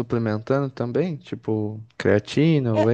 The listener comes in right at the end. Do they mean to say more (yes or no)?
yes